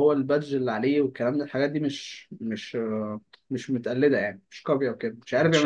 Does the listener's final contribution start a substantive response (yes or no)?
yes